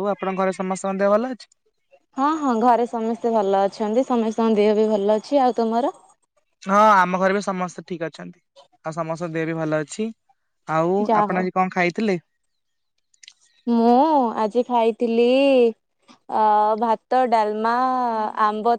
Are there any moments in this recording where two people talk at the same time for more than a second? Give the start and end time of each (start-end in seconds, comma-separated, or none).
none